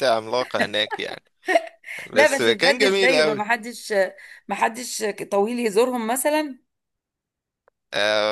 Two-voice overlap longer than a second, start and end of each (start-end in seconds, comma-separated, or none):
2.1-3.4